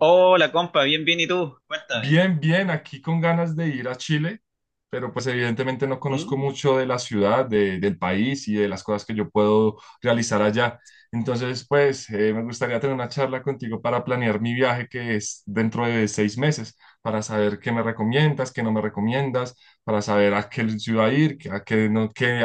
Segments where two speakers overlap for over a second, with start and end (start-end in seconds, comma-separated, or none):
none